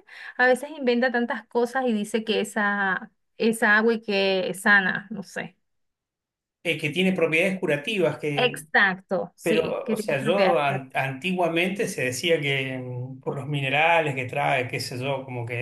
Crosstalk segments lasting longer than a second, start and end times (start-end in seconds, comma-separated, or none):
9.4-11.0